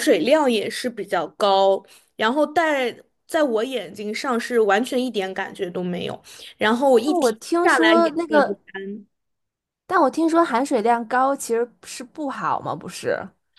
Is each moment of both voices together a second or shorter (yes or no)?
no